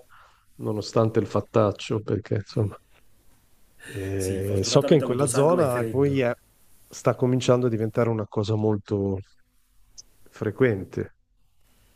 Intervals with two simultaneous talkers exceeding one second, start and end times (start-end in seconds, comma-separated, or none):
4.2-6.2